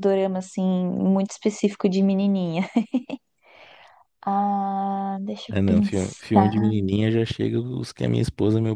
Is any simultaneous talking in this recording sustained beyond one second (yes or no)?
yes